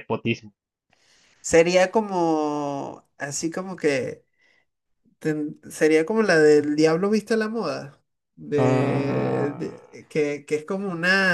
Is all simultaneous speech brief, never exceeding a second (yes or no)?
no